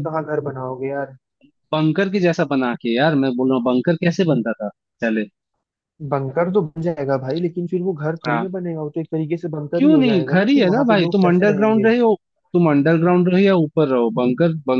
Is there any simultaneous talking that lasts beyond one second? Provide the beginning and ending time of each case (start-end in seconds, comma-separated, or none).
9.7-11.9